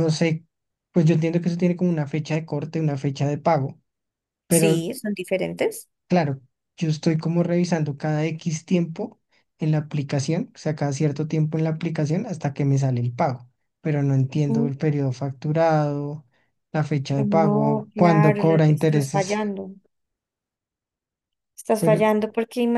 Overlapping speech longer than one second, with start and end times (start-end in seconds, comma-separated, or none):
17.2-19.4